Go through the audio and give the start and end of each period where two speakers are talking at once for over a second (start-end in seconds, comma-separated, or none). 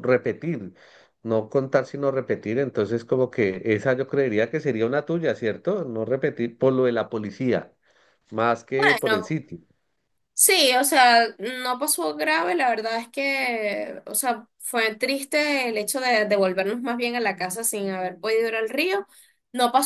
none